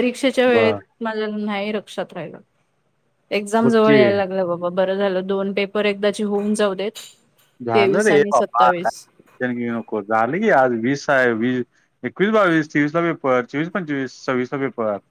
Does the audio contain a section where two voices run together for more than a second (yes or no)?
yes